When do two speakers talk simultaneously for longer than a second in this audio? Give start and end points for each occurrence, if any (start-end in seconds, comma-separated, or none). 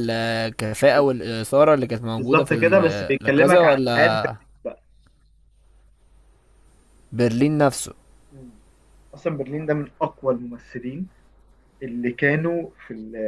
2.2-4.2